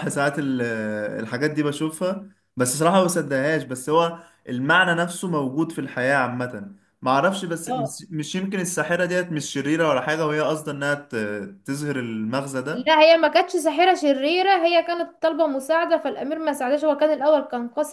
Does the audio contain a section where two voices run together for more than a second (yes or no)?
no